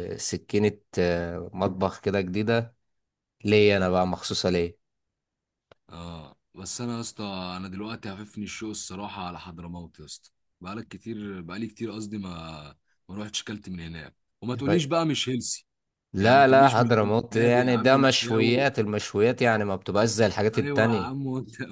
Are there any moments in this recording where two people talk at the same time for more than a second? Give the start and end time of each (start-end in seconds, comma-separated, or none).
16.2-18.7